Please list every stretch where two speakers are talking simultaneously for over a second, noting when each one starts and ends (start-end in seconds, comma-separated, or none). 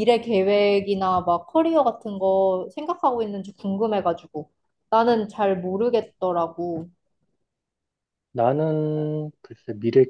none